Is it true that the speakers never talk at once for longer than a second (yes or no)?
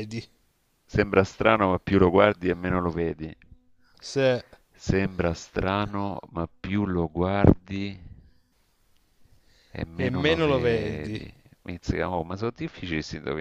no